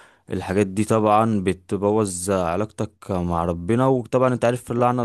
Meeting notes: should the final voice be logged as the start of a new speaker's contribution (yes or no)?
no